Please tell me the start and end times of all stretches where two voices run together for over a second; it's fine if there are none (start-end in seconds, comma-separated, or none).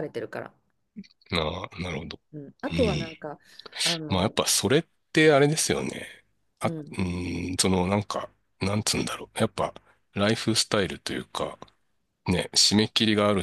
none